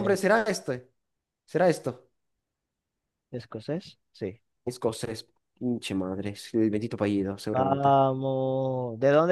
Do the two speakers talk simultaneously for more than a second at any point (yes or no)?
no